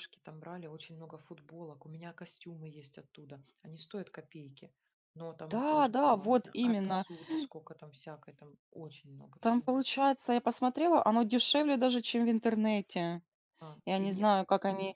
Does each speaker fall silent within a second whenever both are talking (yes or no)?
no